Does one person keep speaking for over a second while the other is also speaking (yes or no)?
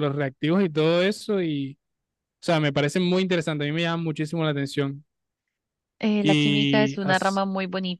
yes